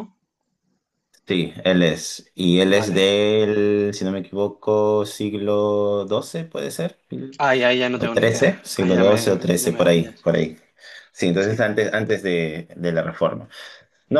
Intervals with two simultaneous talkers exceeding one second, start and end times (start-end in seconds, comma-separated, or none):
7.9-10.3